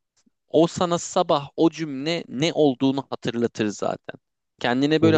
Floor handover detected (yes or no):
no